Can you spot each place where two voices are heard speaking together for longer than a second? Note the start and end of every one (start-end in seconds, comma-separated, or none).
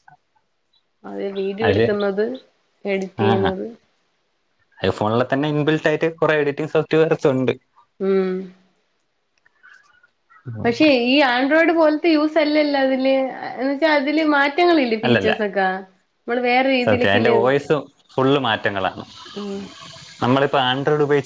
none